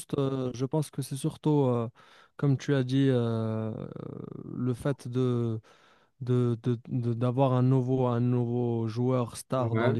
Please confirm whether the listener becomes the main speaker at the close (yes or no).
no